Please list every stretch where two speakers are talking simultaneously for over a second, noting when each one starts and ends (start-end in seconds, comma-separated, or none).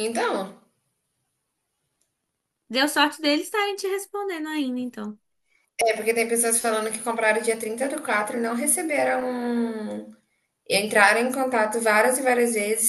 none